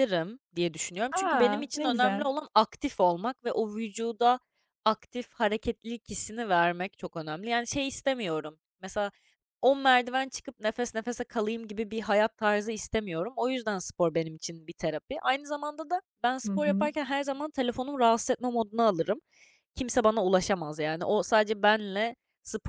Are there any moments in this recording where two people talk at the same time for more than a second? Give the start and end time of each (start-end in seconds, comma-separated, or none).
1.1-2.3